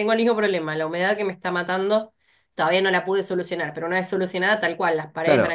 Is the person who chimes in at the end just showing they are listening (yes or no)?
no